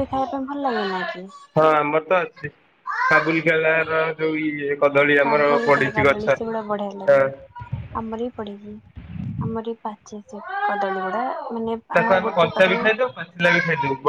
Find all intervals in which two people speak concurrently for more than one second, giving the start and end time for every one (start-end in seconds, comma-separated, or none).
5.2-7.2